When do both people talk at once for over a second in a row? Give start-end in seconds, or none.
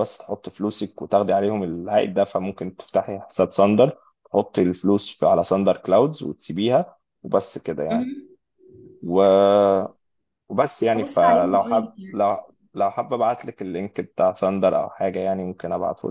10.9-12.1